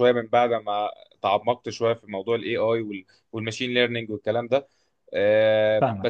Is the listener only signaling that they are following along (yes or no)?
yes